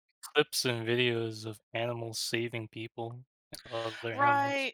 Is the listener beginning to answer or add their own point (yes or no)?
yes